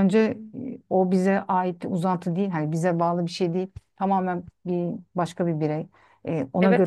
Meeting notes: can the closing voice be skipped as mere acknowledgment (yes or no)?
no